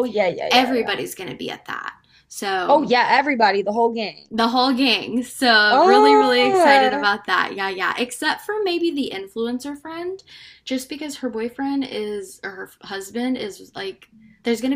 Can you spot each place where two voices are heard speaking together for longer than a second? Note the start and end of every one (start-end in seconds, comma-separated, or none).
5.7-7.1